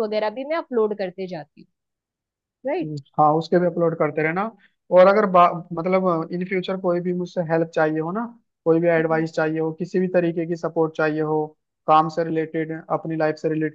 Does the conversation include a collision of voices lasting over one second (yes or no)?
no